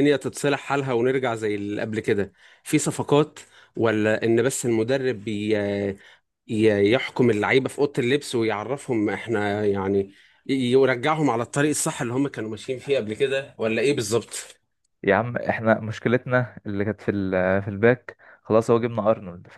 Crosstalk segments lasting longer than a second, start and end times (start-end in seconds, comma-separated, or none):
none